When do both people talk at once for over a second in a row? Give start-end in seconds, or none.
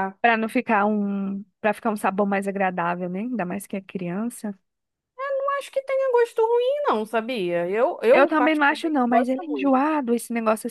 8.1-9.8